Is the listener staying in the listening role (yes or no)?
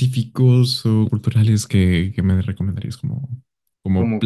yes